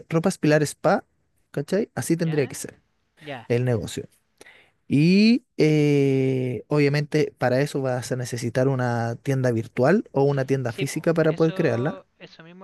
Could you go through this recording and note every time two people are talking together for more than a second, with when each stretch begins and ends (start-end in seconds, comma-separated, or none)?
10.7-12.0